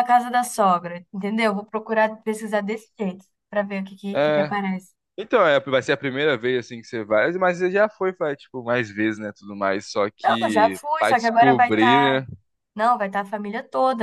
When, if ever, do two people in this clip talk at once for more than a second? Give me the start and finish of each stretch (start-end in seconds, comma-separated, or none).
10.2-12.2